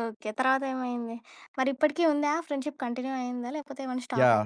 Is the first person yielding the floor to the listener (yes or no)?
yes